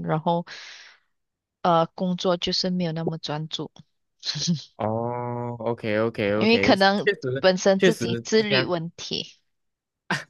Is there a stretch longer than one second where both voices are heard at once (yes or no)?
yes